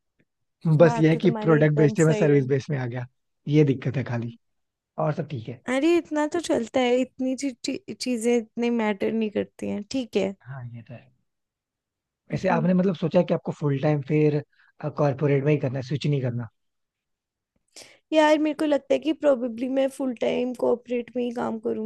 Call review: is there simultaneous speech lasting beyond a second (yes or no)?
yes